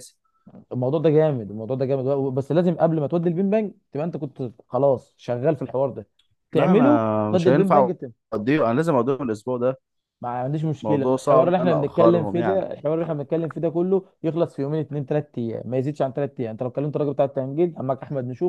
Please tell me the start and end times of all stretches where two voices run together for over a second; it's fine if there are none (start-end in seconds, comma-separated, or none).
6.5-7.9, 10.8-12.7